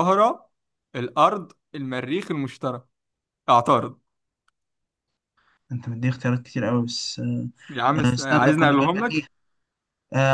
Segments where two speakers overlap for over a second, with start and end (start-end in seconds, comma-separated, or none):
8.0-9.2